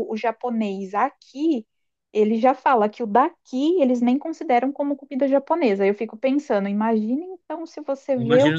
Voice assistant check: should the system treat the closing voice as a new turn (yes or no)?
no